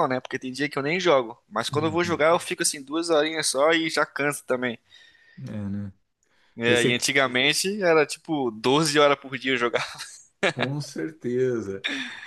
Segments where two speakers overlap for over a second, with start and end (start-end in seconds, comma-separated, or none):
none